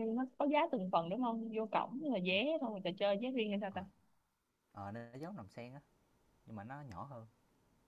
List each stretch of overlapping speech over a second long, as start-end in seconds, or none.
none